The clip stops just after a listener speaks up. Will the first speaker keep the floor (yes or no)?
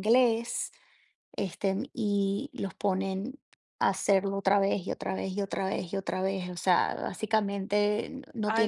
no